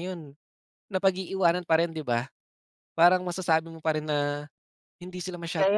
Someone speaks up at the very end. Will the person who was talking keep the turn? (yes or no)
no